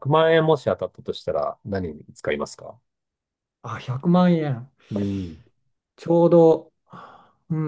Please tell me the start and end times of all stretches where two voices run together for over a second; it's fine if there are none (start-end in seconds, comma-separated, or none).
none